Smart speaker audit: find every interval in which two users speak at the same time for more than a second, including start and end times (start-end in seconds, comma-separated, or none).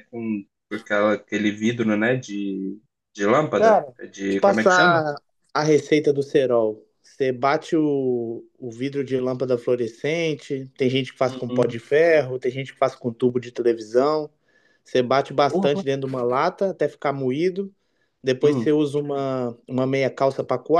3.6-5.0